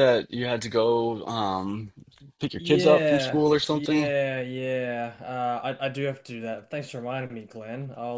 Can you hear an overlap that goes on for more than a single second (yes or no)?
yes